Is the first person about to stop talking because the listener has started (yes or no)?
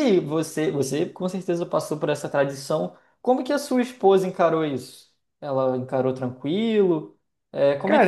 yes